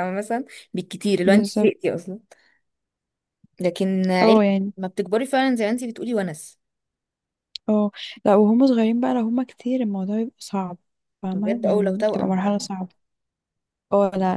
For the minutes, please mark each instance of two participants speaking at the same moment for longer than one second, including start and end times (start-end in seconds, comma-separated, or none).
11.3-12.6